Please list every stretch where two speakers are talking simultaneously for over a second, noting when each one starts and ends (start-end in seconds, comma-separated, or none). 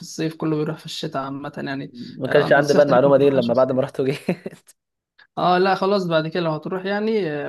2.3-3.8